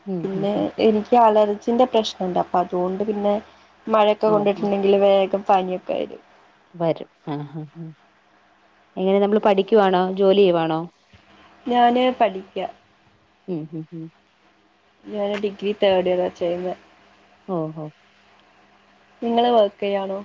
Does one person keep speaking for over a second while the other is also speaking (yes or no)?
no